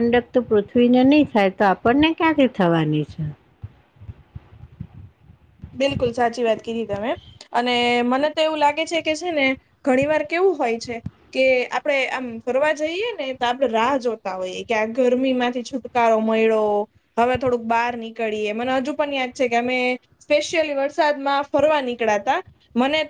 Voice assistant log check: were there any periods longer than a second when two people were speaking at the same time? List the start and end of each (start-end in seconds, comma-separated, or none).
none